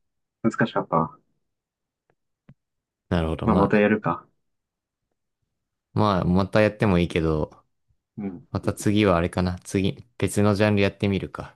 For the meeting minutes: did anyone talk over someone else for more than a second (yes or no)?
no